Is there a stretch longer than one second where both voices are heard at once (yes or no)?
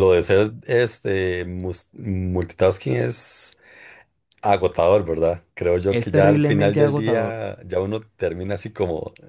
yes